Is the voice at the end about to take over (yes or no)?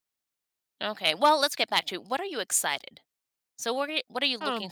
no